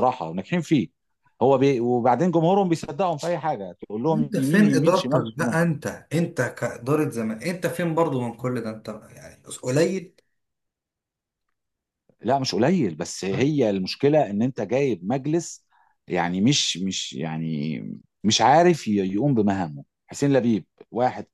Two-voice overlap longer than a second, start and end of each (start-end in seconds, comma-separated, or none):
4.1-5.5